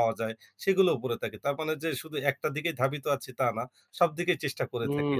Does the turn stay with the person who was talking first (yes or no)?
no